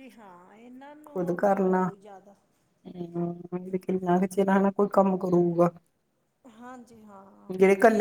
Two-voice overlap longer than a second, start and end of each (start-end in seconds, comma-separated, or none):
none